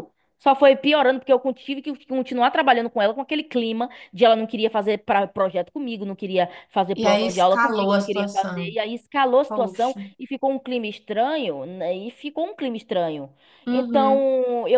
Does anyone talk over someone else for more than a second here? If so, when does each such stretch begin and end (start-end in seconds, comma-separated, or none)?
6.9-8.8